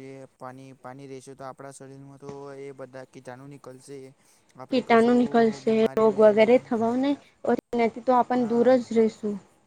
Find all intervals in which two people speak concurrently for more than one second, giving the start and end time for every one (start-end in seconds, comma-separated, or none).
4.7-6.7